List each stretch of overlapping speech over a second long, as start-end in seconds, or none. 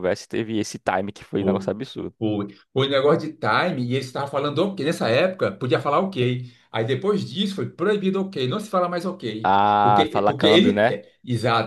9.4-11.0